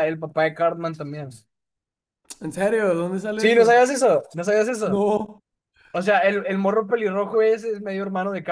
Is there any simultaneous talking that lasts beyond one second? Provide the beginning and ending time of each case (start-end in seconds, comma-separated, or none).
none